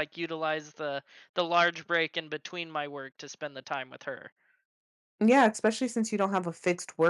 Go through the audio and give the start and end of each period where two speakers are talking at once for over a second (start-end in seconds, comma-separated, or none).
none